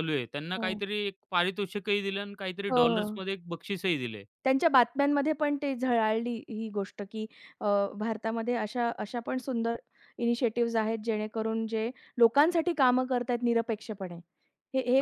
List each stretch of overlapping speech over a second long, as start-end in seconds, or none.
none